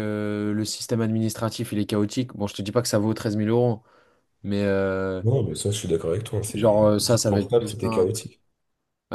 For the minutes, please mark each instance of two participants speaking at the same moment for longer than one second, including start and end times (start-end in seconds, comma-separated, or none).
6.5-8.2